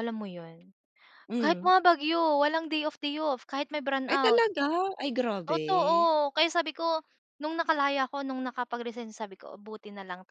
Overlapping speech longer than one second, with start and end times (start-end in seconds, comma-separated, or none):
none